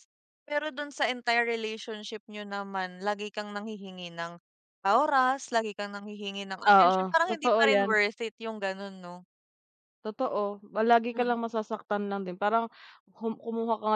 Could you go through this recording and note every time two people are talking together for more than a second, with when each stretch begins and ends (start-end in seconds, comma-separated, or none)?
6.7-8.0